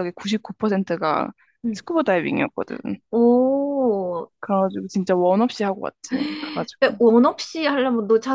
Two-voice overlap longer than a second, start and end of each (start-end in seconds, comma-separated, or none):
none